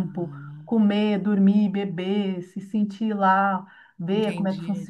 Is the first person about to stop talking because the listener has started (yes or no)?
yes